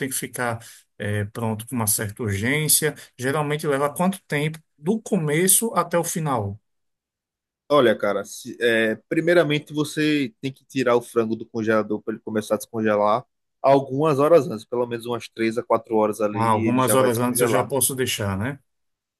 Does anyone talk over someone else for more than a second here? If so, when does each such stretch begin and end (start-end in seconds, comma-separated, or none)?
16.3-17.7